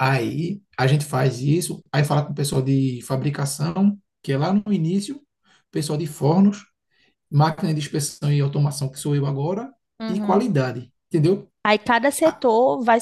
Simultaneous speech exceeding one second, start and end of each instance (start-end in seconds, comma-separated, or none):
none